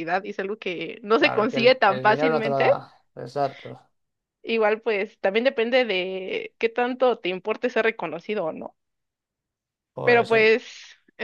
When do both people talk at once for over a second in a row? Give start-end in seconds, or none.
1.2-2.7